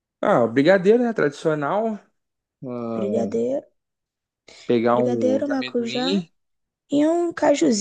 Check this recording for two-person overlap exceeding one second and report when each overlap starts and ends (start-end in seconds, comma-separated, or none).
4.9-6.2